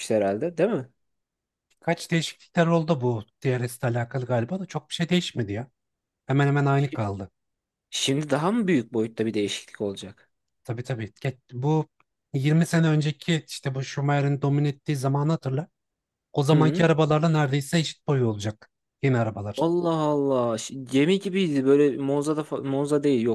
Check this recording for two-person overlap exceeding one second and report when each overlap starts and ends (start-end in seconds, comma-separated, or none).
none